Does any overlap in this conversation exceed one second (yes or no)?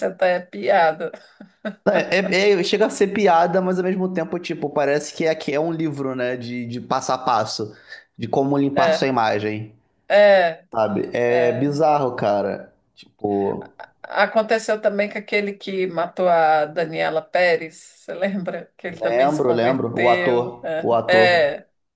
yes